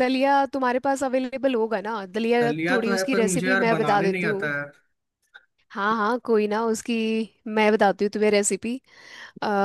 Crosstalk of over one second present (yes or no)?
yes